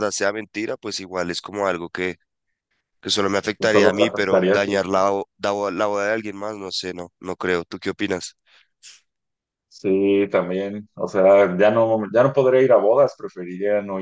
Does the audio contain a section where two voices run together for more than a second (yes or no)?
yes